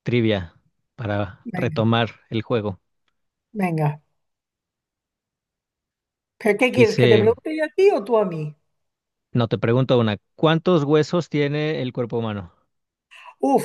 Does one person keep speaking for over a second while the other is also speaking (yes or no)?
no